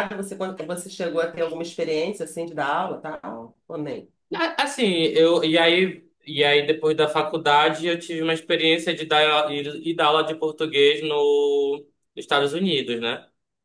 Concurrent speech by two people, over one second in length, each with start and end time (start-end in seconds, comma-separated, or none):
none